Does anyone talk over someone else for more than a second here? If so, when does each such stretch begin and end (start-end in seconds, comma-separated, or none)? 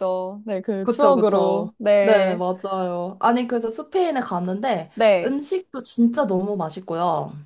0.8-2.4